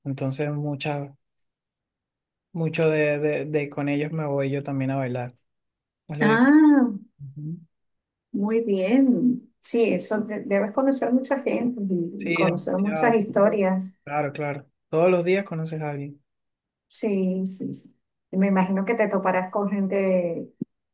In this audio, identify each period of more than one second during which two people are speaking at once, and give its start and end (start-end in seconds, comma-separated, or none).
12.2-13.6